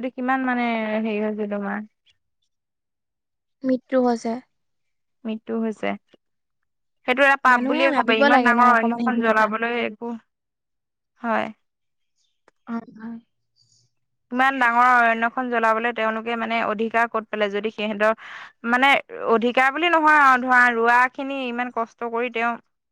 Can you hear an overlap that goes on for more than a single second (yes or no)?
yes